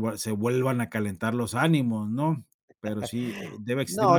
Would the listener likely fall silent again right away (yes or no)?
no